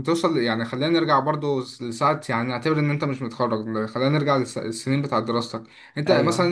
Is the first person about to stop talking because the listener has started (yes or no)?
no